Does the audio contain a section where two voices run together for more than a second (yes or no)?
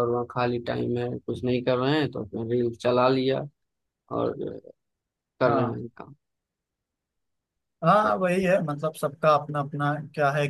no